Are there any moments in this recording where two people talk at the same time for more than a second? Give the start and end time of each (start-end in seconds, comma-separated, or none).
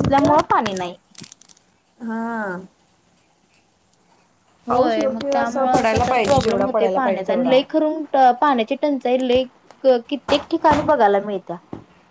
4.7-7.6